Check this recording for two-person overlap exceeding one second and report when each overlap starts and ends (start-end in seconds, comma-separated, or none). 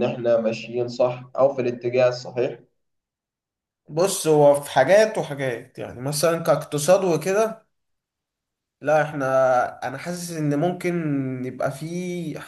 none